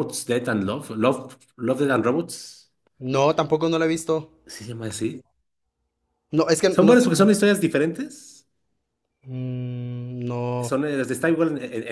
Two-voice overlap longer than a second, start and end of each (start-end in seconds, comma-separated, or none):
none